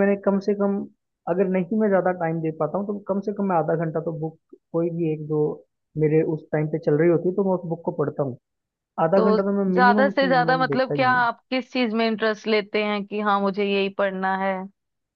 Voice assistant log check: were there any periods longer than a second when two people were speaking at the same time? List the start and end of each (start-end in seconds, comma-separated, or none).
9.2-11.3